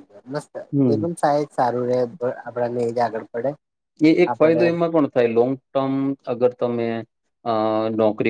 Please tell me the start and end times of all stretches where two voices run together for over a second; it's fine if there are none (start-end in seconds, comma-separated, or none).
none